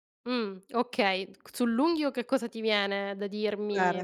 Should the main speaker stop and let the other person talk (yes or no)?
yes